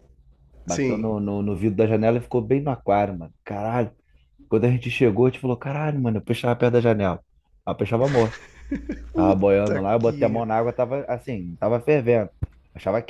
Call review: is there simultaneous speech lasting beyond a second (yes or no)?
yes